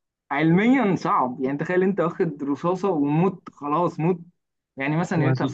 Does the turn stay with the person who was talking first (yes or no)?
yes